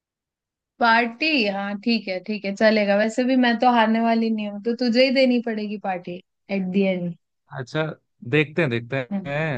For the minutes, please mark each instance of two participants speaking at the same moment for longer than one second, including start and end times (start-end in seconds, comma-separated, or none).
none